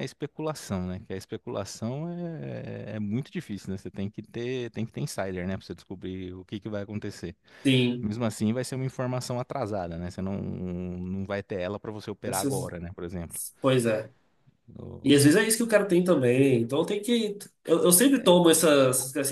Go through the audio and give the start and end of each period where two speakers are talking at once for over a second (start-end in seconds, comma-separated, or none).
none